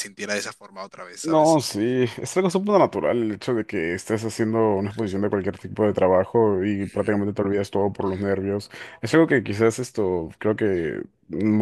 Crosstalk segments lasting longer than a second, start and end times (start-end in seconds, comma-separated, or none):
none